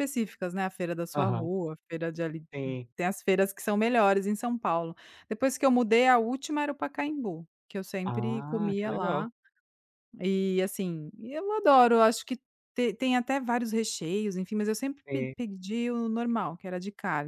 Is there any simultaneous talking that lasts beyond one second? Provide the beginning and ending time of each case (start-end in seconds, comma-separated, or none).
8.1-9.2